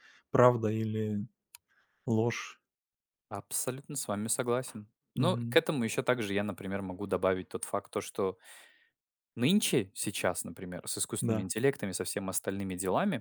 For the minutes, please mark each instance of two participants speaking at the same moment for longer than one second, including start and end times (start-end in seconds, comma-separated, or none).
none